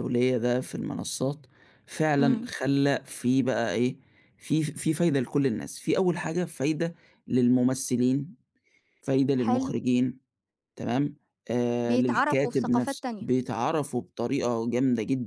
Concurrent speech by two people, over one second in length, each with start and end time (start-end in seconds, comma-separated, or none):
11.8-13.3